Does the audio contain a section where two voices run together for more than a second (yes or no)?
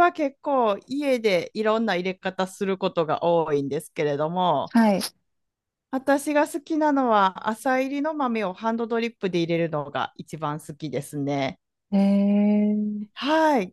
no